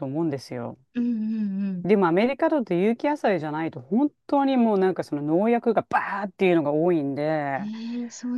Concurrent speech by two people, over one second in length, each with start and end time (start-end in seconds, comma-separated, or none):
none